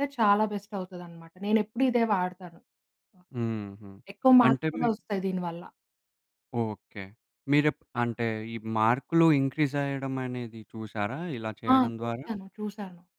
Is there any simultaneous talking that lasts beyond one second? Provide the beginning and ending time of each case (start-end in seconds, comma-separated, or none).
none